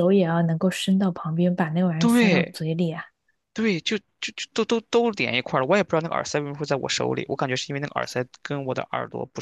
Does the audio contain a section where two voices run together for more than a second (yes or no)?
no